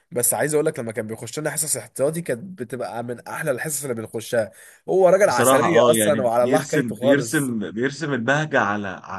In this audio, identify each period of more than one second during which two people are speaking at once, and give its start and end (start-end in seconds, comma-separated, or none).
5.2-7.5